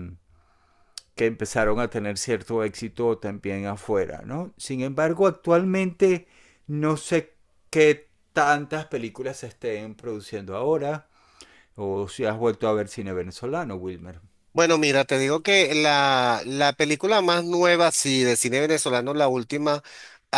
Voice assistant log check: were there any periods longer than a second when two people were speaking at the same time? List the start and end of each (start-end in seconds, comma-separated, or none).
none